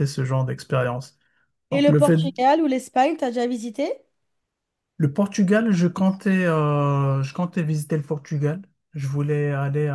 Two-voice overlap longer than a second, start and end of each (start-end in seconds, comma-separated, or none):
none